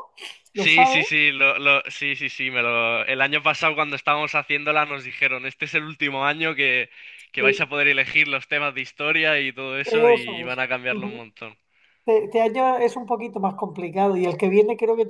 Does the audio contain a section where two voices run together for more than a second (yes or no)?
yes